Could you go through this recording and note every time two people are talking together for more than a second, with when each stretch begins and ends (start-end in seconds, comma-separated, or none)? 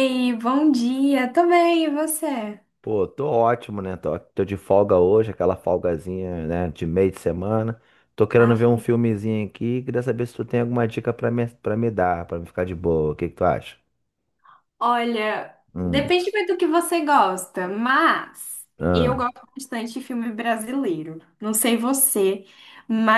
none